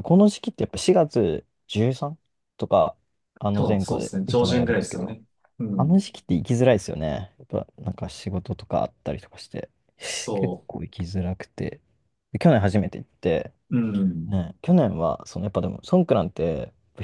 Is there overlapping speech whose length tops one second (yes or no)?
yes